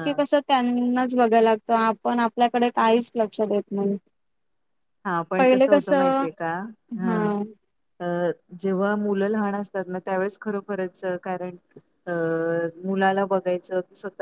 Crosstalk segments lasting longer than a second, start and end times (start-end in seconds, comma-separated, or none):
none